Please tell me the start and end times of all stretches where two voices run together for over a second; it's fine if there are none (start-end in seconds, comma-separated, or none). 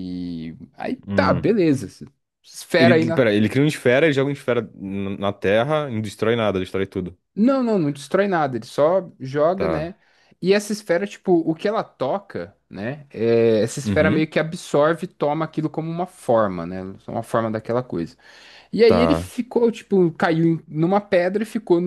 none